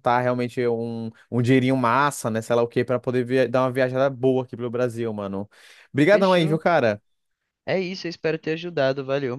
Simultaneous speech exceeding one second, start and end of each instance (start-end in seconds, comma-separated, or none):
none